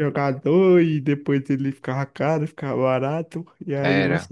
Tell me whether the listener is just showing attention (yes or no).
yes